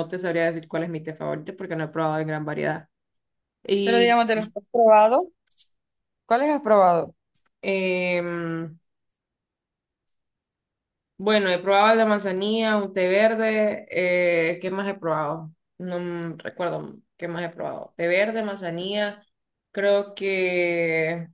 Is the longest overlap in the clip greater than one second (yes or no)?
no